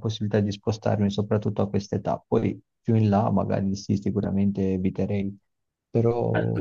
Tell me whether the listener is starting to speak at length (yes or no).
yes